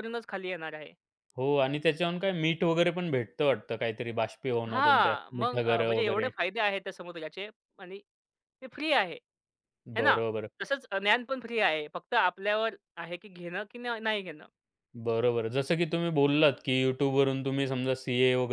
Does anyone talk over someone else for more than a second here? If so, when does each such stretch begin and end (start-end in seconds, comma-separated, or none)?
4.7-6.3